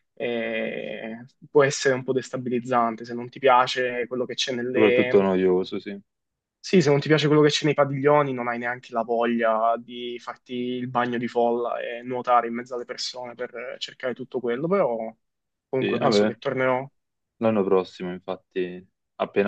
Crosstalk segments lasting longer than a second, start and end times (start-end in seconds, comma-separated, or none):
none